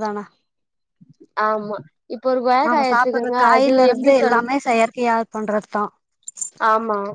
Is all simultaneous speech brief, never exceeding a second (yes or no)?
no